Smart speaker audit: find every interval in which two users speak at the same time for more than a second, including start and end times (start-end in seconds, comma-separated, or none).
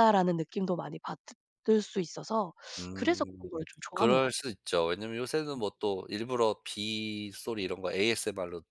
2.9-4.5